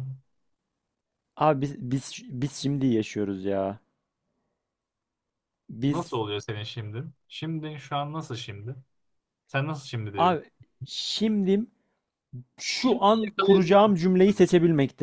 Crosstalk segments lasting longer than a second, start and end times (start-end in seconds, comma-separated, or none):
12.8-14.0